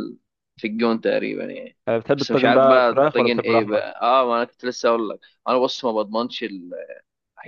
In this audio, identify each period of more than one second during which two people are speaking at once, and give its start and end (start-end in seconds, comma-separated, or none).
2.2-4.0